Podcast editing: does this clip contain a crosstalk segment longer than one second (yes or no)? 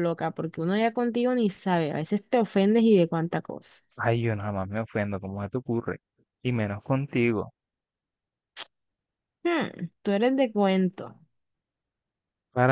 no